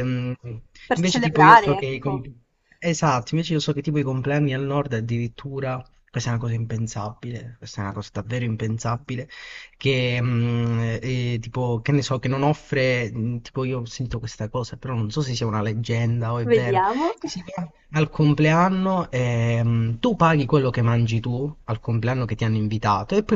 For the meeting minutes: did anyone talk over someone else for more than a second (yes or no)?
yes